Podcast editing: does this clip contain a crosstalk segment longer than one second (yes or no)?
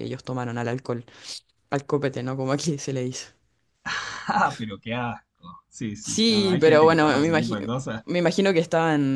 yes